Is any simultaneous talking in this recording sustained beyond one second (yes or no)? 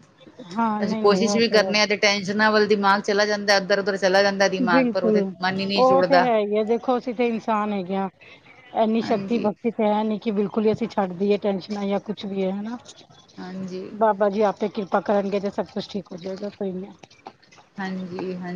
yes